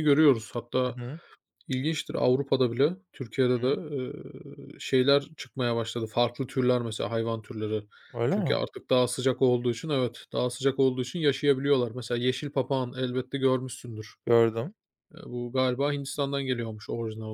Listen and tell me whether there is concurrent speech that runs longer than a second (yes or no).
no